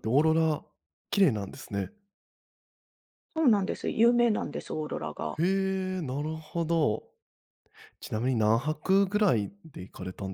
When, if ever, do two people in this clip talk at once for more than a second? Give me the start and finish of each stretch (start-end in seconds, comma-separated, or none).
none